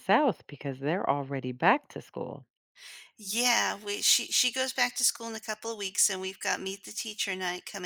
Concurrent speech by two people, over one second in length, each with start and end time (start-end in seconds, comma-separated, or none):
none